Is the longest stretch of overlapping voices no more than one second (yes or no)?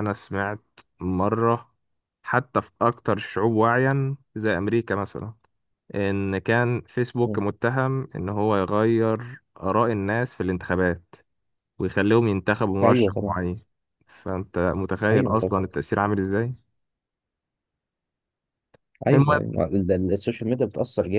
yes